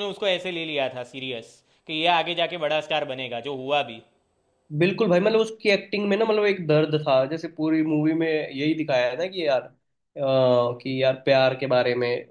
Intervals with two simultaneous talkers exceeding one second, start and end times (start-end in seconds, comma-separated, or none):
none